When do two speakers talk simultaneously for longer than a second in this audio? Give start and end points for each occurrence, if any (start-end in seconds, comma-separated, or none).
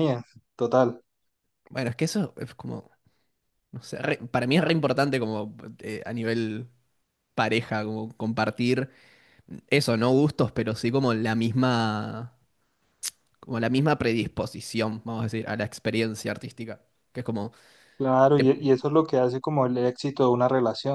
none